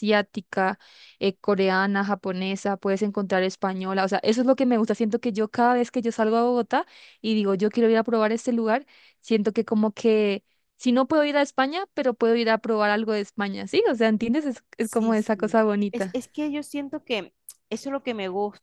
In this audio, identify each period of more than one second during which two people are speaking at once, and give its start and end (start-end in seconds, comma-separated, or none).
14.8-16.2